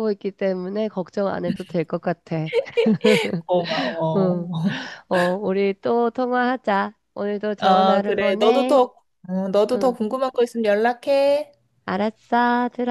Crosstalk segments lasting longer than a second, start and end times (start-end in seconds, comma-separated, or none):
7.6-8.8